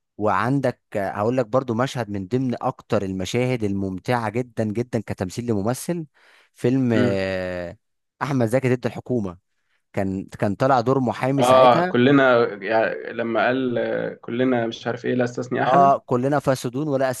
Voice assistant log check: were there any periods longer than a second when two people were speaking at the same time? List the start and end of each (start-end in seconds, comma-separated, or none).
none